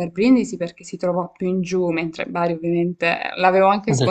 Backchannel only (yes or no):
no